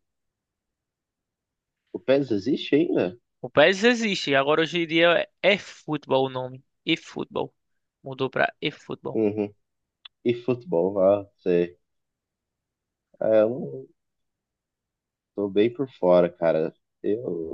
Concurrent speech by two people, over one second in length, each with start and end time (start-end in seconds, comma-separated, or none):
none